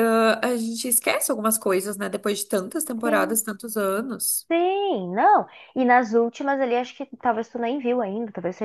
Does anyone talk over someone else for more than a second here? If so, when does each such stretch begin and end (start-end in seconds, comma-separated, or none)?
none